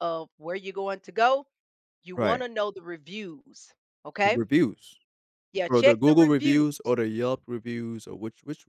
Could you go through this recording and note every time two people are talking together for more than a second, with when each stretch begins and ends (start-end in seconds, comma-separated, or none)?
5.7-6.9